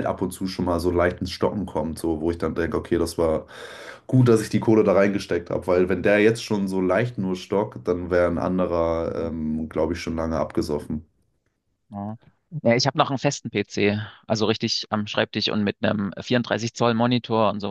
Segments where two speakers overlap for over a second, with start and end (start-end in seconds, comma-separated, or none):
none